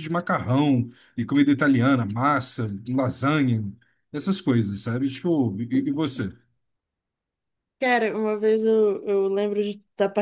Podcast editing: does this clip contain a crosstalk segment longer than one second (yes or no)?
no